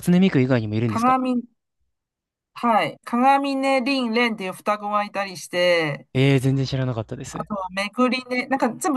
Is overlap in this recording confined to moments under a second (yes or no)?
yes